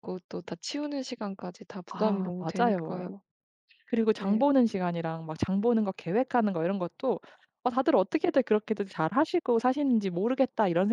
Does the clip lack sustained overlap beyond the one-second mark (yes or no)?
no